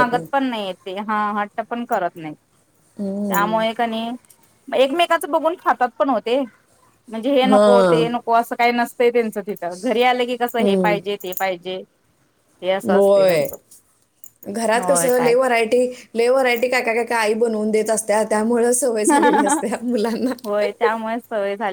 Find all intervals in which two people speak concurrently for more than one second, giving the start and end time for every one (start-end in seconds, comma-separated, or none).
none